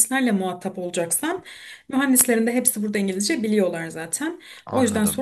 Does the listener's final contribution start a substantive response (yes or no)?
no